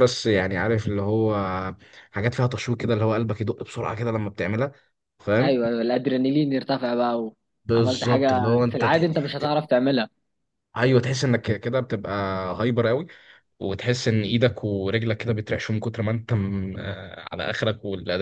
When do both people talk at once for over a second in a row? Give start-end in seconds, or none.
7.8-9.1